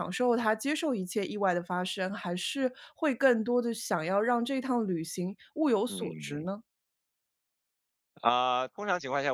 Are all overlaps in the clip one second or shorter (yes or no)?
yes